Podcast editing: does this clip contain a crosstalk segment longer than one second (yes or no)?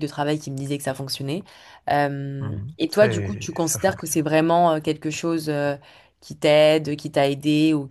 yes